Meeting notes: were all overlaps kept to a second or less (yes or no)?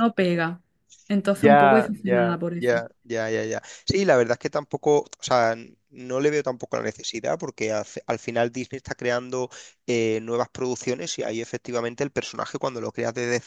no